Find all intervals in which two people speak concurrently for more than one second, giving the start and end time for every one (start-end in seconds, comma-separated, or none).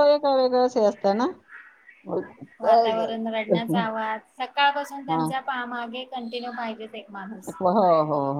none